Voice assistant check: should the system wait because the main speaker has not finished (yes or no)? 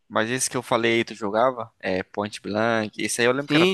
no